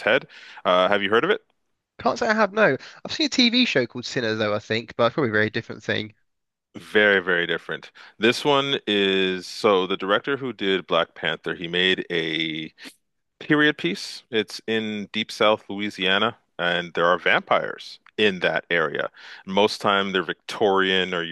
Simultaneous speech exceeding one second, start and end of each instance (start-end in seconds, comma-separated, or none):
none